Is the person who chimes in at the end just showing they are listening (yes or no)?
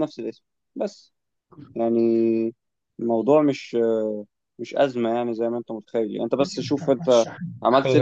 yes